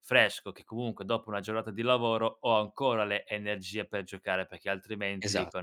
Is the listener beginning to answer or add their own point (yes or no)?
no